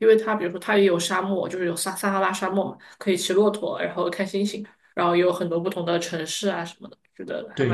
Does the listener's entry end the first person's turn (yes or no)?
yes